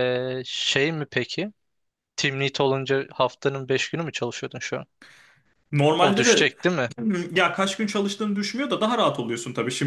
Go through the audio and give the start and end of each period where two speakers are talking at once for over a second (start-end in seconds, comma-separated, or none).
none